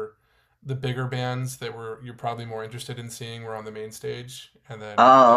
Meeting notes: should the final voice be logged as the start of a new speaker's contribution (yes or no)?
no